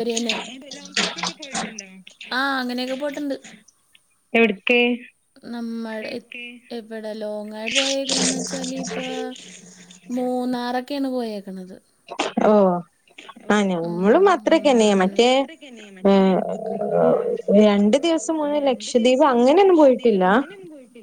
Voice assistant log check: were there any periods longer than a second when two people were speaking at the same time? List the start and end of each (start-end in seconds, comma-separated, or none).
18.6-20.2